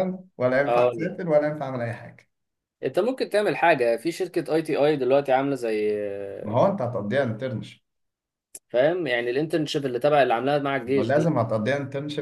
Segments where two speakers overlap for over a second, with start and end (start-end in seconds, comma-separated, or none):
none